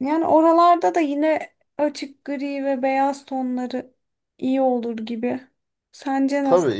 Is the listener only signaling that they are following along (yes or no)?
no